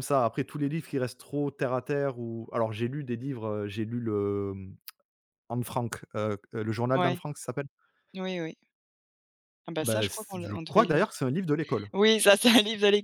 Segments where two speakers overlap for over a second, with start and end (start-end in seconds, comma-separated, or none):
9.8-11.0